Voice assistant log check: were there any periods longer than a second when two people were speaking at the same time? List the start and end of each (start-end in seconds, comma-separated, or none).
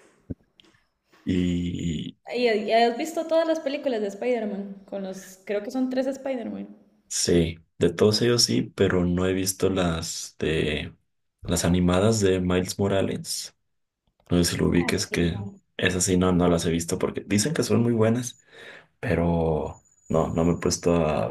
none